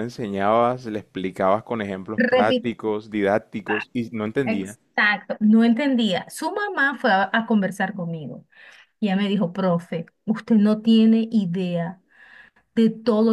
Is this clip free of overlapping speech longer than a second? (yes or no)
yes